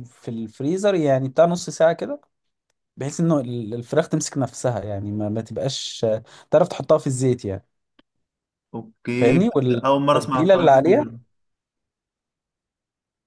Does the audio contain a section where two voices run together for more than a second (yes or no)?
yes